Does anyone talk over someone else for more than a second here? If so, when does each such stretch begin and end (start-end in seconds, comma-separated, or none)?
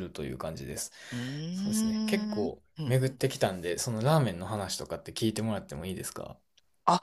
1.5-3.0